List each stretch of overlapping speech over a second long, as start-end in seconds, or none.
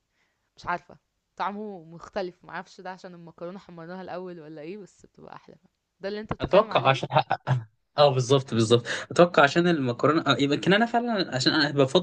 none